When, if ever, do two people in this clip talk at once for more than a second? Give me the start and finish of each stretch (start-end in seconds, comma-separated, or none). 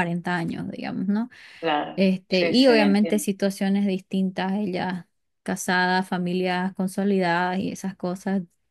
1.9-3.3